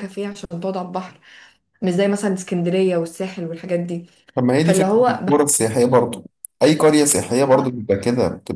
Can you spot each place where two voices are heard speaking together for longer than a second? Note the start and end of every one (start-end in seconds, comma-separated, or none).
none